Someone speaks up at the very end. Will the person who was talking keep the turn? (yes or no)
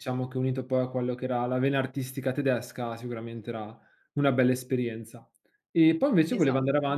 yes